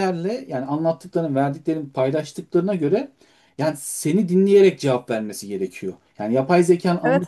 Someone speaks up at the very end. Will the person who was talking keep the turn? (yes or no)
no